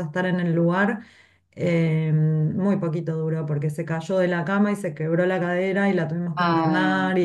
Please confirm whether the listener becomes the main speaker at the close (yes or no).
no